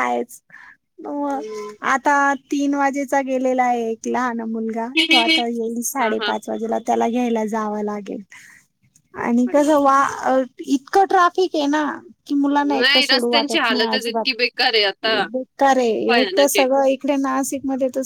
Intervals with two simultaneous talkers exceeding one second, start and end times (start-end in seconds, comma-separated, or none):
12.8-14.2